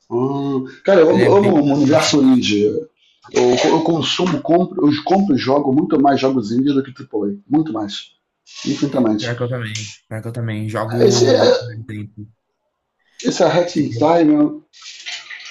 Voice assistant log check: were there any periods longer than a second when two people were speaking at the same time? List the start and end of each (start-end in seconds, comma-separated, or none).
1.1-2.3